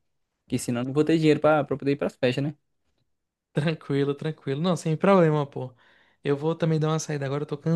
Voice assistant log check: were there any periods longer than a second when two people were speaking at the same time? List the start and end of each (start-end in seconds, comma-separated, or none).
none